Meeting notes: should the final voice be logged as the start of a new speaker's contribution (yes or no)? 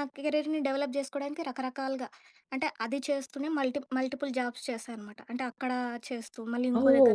yes